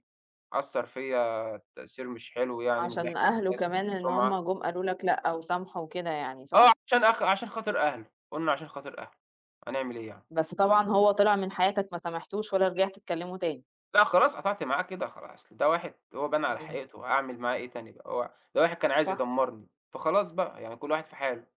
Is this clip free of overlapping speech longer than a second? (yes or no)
no